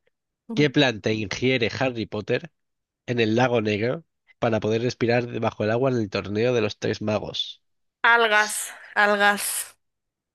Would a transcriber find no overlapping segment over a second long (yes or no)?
yes